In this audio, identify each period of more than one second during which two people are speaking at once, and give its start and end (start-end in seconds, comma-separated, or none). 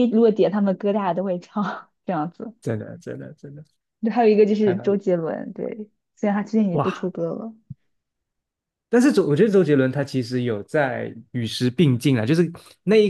none